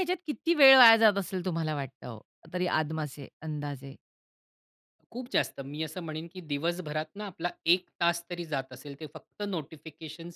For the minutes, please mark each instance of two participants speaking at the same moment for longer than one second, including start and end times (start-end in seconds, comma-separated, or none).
none